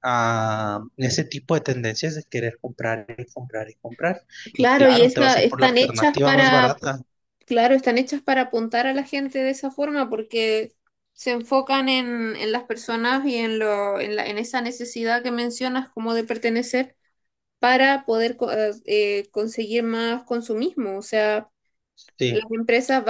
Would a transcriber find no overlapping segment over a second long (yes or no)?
no